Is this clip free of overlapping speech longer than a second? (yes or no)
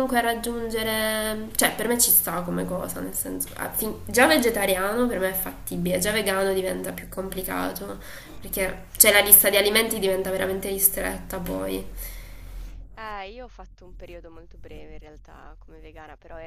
yes